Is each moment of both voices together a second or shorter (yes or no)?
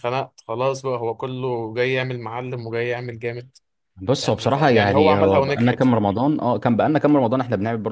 no